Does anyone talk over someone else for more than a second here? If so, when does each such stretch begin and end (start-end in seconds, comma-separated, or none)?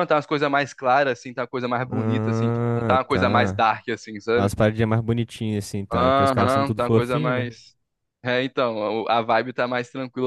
1.9-3.6, 5.9-7.5